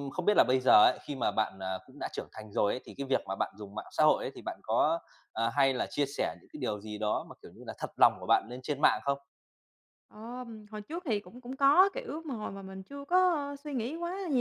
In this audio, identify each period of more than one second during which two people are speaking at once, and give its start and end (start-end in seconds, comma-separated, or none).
none